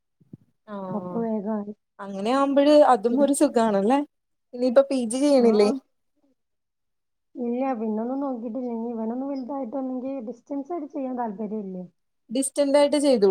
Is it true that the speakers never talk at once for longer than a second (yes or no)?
yes